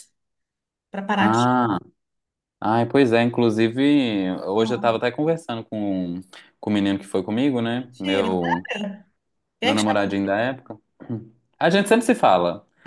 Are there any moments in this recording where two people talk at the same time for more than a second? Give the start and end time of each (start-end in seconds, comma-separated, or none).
none